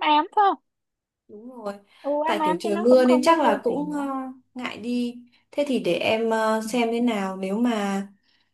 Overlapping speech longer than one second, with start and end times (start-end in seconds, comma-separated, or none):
2.2-4.0